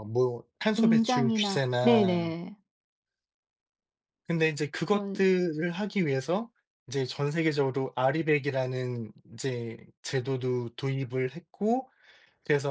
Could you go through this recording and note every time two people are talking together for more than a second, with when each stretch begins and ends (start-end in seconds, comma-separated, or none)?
0.7-2.4